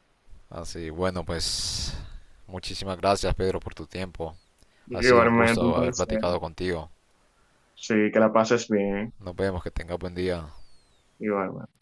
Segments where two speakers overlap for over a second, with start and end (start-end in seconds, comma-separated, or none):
4.9-6.2